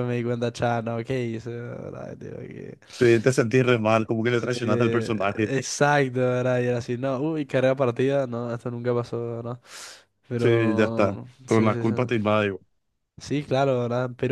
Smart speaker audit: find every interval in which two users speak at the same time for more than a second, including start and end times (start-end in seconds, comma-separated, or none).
10.3-11.9